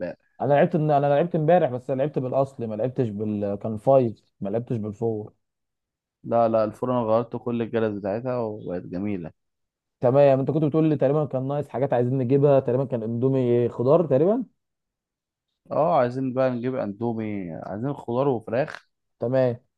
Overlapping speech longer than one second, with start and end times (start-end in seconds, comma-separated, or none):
none